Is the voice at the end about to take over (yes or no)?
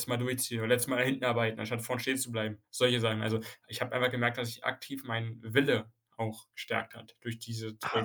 yes